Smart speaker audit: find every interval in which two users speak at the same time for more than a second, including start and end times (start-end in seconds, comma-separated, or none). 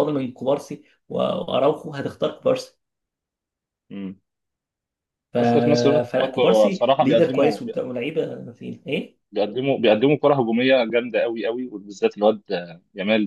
6.1-7.6